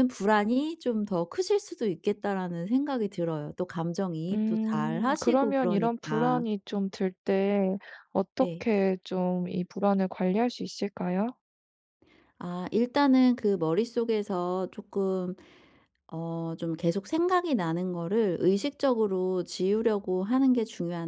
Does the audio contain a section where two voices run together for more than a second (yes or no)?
yes